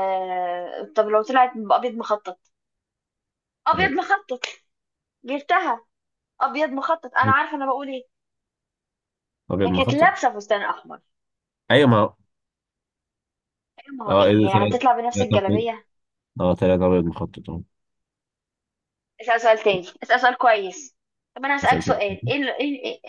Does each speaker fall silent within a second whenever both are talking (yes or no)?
no